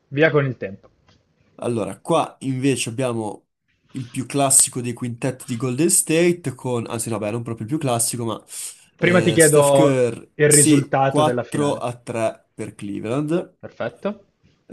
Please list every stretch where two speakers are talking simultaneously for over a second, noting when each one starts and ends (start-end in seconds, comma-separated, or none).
9.0-11.8